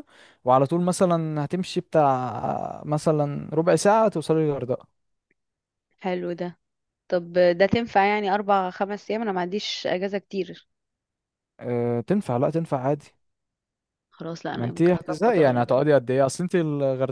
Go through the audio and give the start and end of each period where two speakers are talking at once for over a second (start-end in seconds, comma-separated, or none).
14.6-15.8